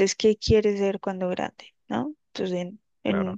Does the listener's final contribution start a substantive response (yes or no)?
no